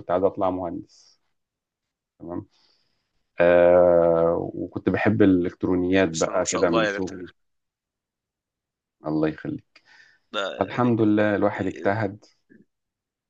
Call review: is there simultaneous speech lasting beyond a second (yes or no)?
yes